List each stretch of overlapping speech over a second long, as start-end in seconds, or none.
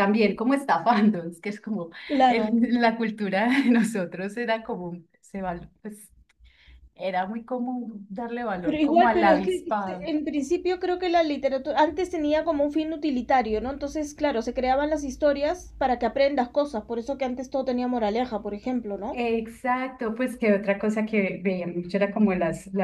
8.6-10.1